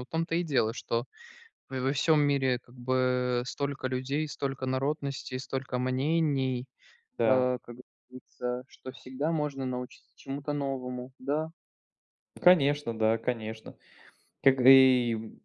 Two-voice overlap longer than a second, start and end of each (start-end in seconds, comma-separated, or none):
none